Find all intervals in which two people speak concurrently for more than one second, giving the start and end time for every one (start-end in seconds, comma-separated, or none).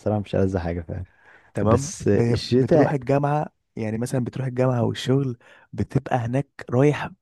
1.6-3.0